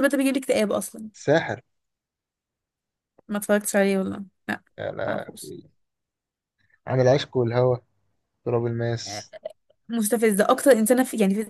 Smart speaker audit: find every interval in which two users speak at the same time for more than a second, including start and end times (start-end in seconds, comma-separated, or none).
none